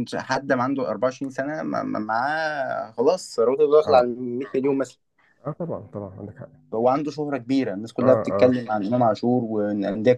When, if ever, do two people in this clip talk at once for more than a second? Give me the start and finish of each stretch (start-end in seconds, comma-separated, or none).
none